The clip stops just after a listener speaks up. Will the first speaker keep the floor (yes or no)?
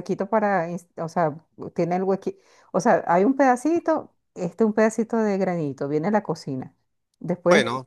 yes